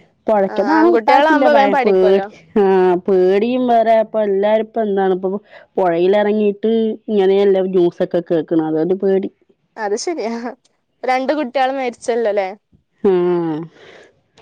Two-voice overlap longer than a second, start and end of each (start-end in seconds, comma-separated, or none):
0.5-2.3